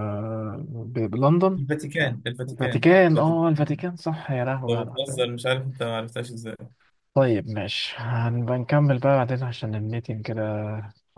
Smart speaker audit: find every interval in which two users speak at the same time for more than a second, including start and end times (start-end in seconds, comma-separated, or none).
1.6-3.6